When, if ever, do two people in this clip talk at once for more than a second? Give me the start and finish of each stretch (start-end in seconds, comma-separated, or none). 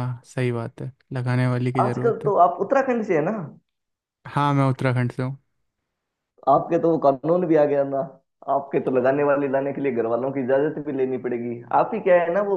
none